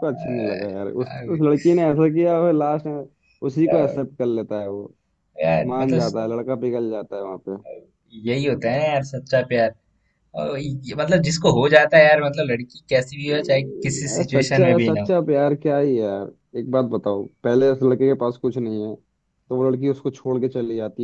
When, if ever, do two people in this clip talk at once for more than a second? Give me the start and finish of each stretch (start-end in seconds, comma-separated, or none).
13.3-15.1